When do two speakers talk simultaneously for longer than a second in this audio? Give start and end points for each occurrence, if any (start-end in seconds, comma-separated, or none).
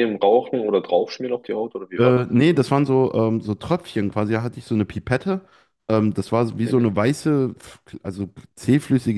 none